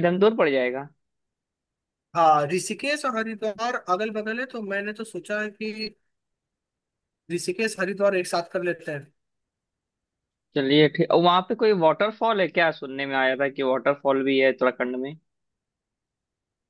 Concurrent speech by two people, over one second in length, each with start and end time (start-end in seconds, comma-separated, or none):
none